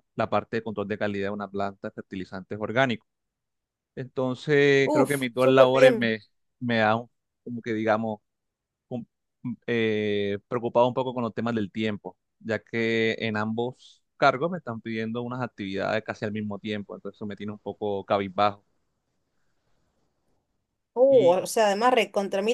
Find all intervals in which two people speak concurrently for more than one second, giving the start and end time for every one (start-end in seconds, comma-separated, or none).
4.8-6.2